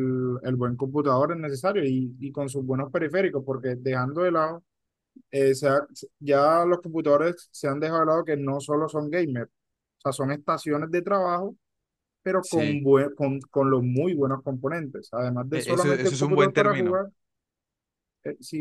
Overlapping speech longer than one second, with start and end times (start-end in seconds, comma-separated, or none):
15.5-17.0